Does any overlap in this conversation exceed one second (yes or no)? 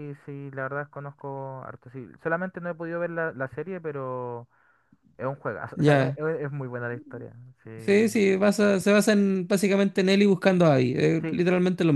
no